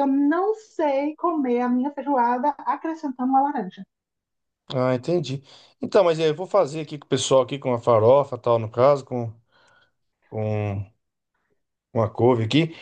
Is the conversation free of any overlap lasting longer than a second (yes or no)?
yes